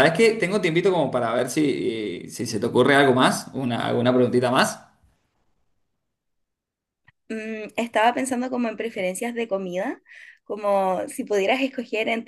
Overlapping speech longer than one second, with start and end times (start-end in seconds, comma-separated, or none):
none